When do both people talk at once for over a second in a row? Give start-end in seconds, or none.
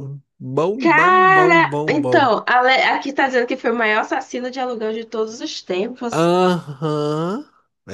0.8-2.3